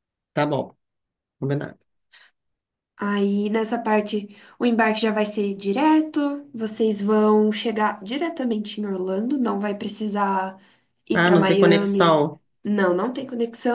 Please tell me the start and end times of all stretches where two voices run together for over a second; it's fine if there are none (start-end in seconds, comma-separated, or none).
11.1-12.4